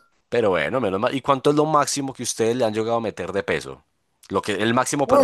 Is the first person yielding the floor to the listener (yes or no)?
yes